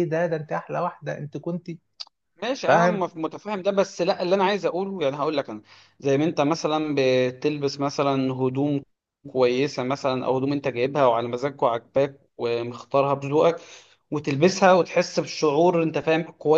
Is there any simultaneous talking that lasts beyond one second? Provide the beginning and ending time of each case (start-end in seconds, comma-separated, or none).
none